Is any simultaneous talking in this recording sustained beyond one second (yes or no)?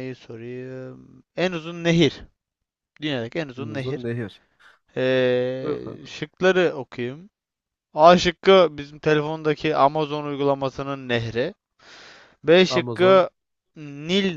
no